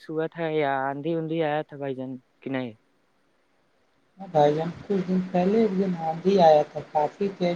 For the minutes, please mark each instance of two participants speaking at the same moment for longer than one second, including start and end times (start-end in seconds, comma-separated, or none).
none